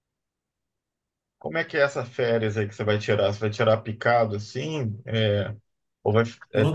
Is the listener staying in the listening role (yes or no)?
no